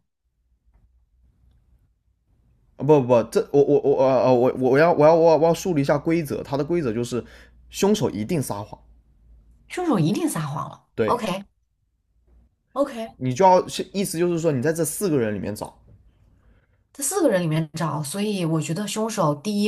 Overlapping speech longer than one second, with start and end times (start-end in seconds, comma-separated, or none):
none